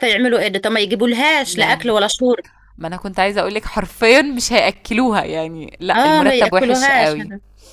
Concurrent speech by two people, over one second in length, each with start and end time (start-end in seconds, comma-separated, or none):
6.0-7.2